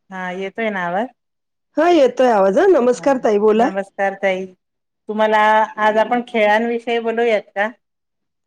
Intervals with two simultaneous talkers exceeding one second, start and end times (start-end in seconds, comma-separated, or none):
none